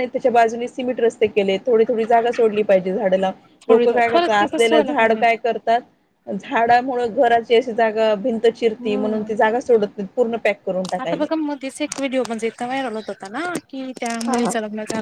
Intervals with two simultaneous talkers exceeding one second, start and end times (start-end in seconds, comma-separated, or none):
3.7-5.2